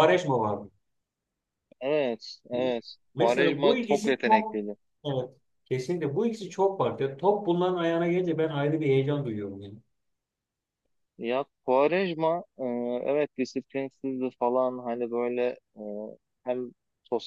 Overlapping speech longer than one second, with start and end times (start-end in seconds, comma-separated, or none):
3.1-4.6